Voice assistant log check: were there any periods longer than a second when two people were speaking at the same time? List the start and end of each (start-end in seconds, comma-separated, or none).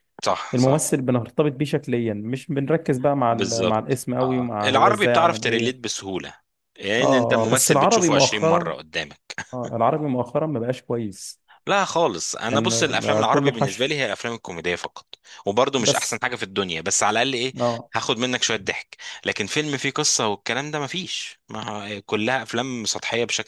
3.3-5.9, 7.0-8.7, 12.5-13.9